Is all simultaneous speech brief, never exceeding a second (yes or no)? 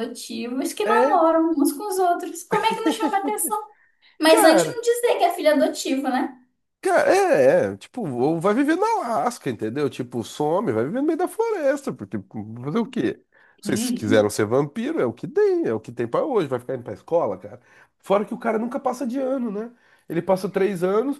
yes